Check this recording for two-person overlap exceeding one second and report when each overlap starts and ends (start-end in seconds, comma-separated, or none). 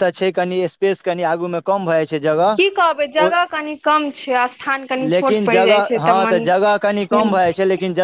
5.1-7.3